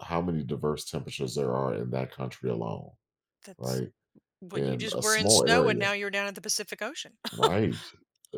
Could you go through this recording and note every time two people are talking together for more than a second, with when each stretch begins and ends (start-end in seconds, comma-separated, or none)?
4.5-5.9